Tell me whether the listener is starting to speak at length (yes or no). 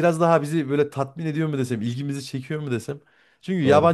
no